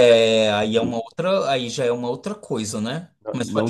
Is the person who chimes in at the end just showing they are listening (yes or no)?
no